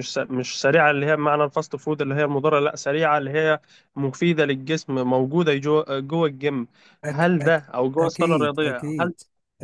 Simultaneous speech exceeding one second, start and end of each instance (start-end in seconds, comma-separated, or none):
7.1-9.1